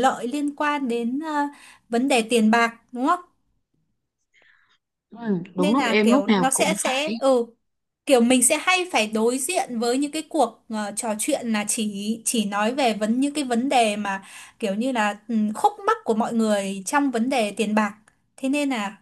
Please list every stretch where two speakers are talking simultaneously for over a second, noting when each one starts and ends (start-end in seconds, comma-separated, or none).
5.5-7.1